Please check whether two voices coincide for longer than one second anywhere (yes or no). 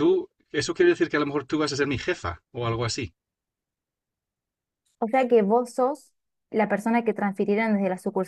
no